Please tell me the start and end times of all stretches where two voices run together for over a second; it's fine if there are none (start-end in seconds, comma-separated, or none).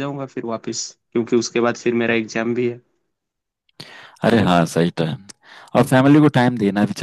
none